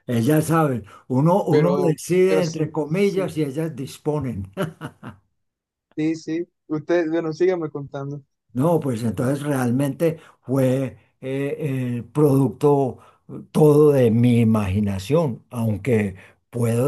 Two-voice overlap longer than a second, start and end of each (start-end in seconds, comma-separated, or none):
1.5-3.3